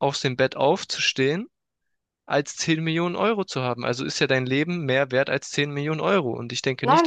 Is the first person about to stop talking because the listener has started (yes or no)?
yes